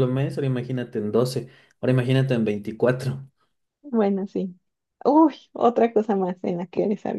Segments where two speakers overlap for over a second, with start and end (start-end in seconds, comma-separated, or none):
none